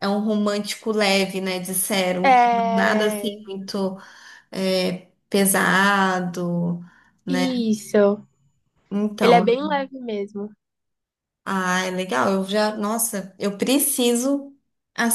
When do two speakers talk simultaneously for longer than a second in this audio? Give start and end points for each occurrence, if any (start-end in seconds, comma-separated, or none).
2.2-3.4